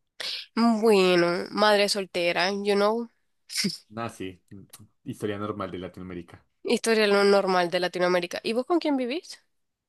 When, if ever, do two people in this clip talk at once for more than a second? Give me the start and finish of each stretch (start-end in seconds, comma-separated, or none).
none